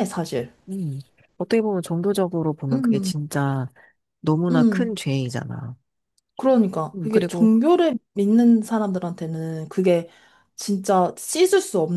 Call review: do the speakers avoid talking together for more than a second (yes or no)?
yes